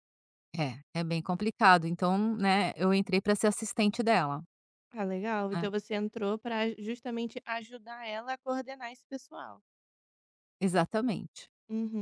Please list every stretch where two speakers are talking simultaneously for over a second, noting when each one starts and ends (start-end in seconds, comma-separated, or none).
none